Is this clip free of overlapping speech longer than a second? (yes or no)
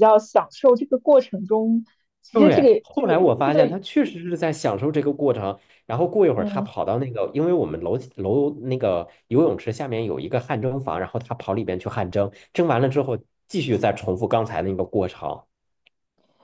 no